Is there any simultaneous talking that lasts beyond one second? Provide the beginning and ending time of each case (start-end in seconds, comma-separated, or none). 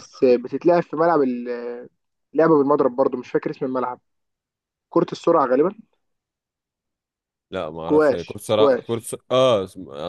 7.8-9.1